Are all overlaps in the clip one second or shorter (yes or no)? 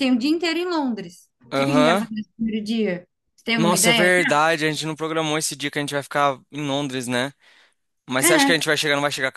yes